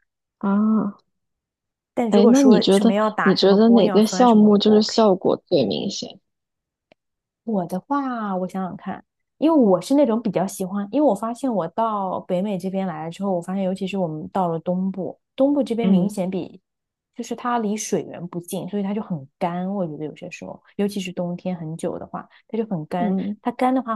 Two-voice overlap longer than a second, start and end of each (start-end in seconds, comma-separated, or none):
2.1-5.1